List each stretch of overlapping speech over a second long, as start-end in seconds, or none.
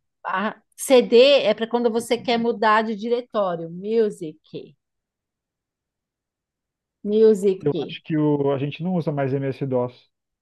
none